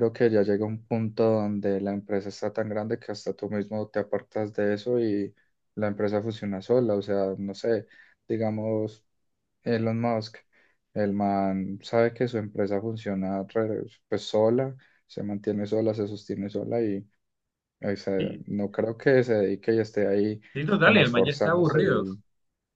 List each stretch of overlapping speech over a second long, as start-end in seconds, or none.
20.8-22.0